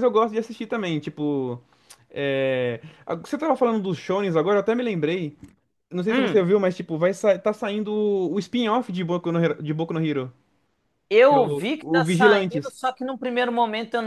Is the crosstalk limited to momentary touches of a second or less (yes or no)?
no